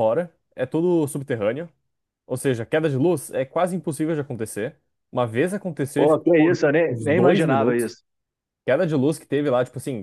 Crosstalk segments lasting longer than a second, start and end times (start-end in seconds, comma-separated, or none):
6.0-8.0